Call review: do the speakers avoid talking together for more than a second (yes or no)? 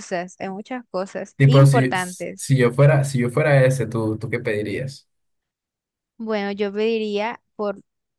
no